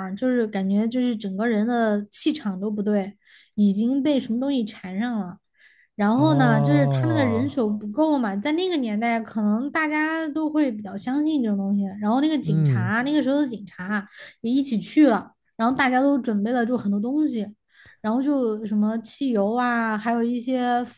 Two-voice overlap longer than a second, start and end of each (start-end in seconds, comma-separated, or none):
6.1-7.5